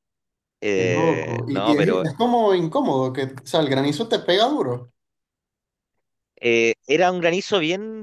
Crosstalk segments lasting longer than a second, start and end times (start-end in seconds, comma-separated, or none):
0.7-2.0